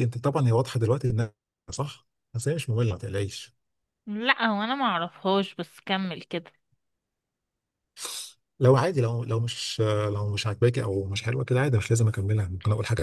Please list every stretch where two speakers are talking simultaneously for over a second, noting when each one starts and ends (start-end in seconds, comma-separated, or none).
none